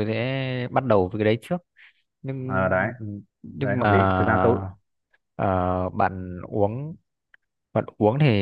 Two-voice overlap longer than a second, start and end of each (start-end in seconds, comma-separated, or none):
none